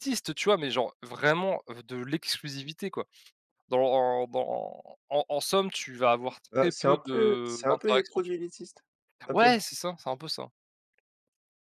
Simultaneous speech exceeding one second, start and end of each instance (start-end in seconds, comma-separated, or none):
6.5-8.4